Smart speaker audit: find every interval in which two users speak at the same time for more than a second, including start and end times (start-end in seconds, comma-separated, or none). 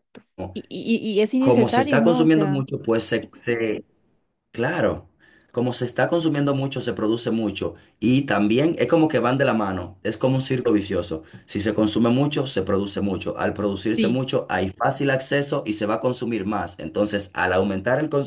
1.4-2.6